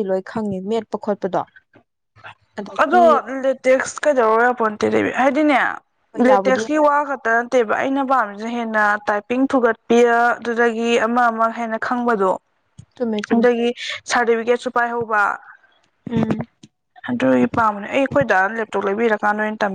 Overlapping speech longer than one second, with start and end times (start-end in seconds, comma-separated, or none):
none